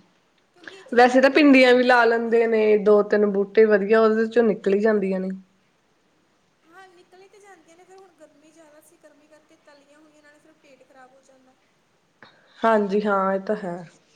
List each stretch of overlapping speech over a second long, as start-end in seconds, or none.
0.9-2.6